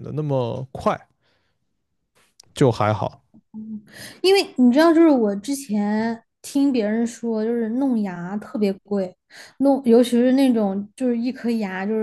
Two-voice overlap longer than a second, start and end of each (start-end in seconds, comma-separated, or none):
none